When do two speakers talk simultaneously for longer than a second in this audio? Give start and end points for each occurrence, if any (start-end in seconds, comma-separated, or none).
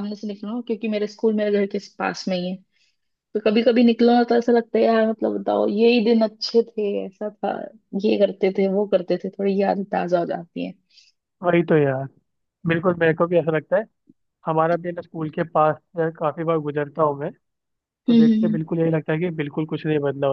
none